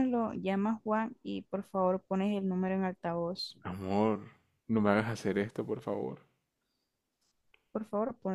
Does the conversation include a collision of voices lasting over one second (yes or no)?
no